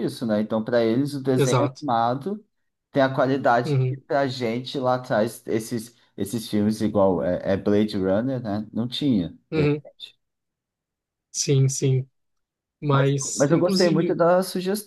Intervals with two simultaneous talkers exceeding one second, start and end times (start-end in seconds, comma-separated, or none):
12.9-14.2